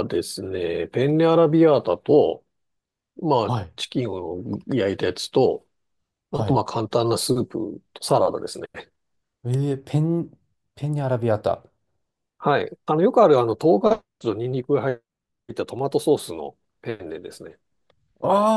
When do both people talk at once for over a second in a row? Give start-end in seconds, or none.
none